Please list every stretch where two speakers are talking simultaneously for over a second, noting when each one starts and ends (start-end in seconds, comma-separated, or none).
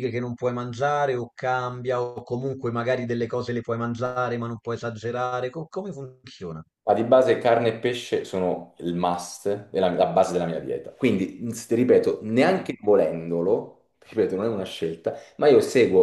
none